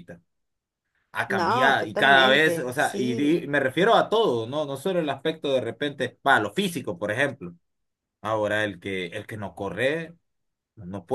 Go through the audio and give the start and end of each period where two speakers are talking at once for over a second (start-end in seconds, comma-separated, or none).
1.3-3.4